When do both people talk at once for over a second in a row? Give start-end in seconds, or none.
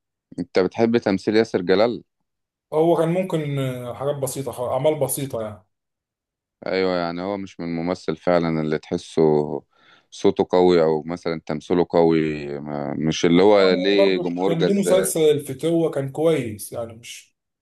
13.7-15.1